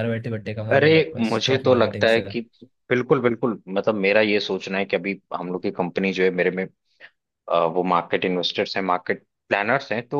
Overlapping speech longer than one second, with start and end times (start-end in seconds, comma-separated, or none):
0.7-2.2